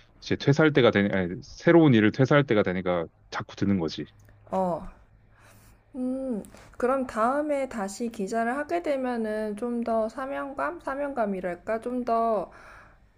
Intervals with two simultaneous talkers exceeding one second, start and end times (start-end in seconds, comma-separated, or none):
none